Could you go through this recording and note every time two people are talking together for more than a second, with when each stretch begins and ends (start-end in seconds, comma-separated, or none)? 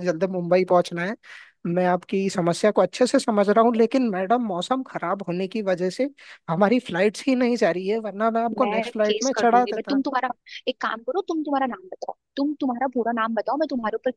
8.6-10.0